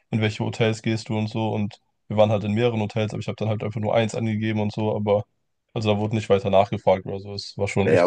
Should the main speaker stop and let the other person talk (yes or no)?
yes